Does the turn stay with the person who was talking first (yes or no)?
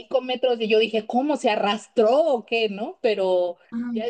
yes